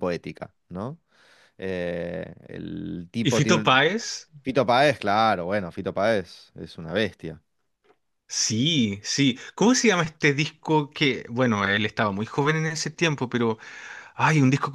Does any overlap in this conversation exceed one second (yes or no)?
no